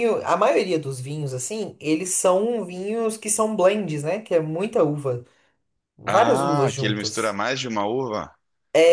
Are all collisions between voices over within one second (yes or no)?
no